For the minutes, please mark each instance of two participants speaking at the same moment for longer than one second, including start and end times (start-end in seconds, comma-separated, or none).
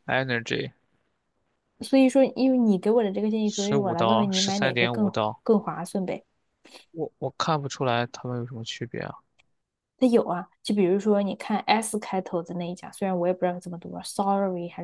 3.4-5.4